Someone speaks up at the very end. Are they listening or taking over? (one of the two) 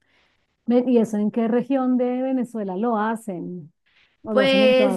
taking over